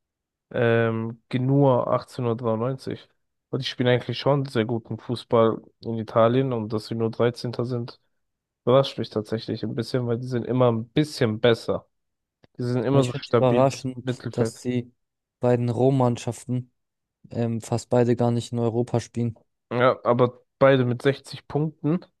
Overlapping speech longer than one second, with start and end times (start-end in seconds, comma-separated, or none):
13.0-14.6